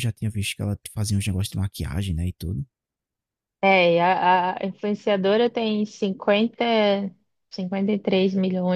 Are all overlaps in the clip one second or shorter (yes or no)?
yes